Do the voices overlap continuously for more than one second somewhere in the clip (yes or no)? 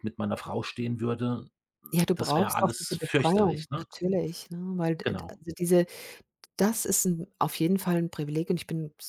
yes